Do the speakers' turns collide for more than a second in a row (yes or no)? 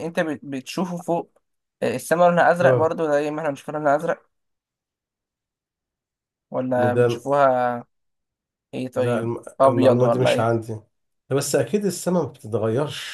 yes